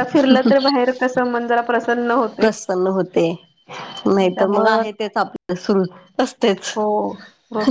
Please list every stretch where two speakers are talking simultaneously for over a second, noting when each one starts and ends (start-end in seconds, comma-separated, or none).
none